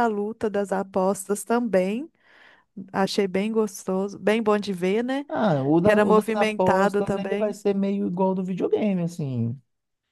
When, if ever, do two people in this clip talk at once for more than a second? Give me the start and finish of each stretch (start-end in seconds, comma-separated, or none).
5.8-7.6